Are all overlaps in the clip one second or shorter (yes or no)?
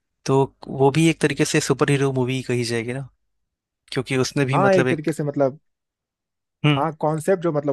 yes